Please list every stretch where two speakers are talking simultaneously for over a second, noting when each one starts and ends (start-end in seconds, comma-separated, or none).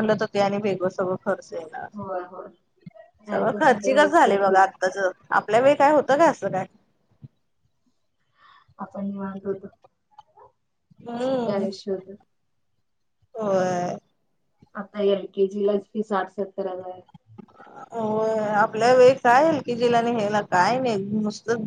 3.3-4.7